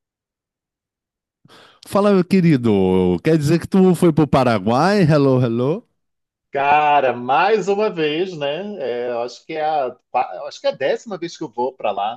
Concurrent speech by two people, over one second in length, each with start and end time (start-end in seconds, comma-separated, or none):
none